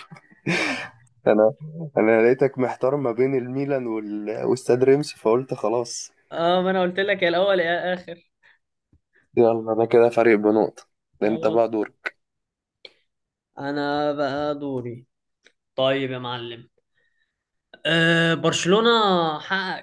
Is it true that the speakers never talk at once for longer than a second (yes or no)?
yes